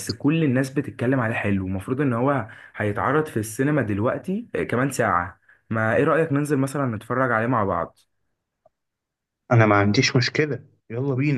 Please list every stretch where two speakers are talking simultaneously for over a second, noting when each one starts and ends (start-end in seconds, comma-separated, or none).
none